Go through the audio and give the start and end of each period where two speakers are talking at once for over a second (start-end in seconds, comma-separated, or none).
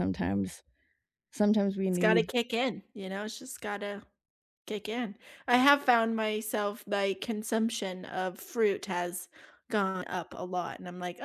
none